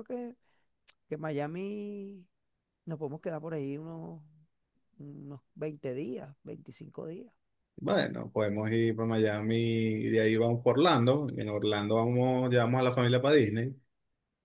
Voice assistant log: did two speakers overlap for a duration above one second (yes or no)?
no